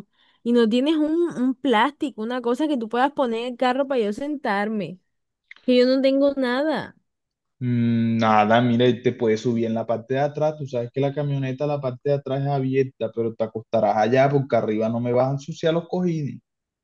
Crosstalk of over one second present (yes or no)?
no